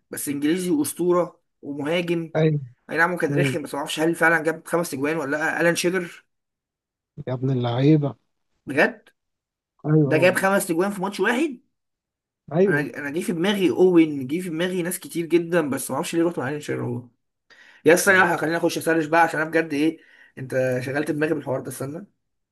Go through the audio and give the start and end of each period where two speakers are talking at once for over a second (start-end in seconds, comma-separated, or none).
none